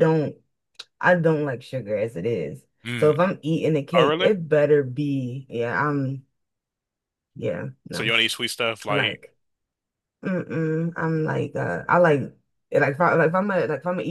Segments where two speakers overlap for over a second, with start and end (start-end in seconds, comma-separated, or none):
none